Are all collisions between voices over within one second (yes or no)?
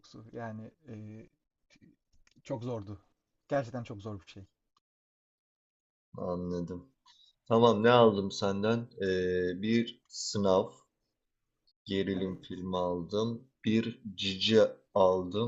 yes